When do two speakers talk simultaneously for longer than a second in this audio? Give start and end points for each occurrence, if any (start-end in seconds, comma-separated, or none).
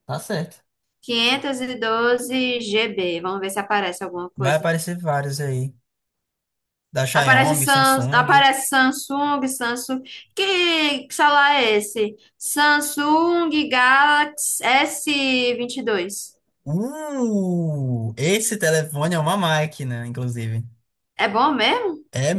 7.1-8.5